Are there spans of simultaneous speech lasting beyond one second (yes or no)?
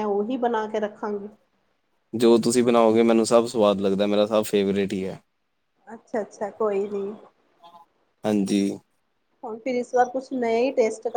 no